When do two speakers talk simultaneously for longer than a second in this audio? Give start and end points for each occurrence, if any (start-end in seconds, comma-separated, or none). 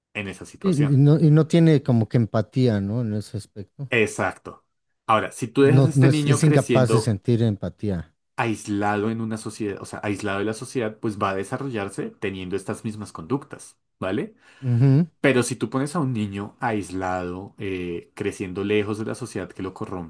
5.6-7.2